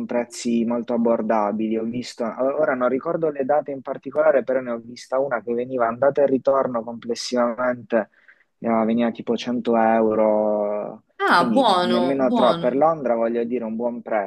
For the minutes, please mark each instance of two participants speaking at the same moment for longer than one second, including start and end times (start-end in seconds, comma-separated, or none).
11.2-12.8